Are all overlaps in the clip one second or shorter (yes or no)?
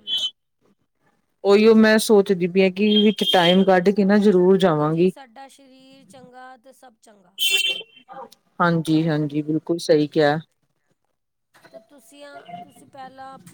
yes